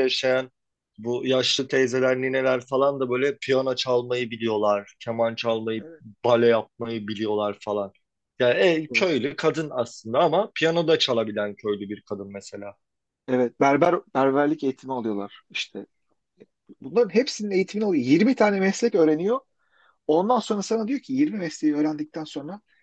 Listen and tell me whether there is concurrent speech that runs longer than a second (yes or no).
no